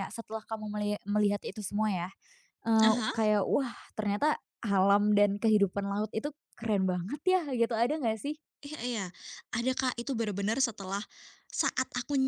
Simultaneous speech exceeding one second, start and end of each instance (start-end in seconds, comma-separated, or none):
none